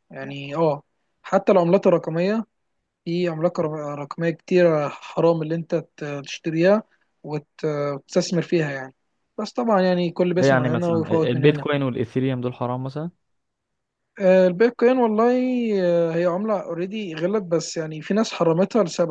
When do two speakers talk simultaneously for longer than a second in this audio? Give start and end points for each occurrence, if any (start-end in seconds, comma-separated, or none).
10.3-11.7